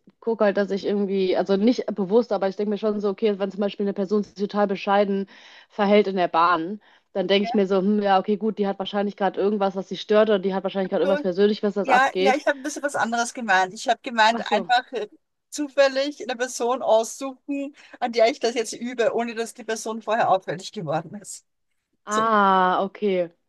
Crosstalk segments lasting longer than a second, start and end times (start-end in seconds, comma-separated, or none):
none